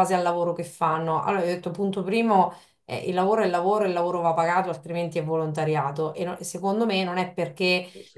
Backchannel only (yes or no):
yes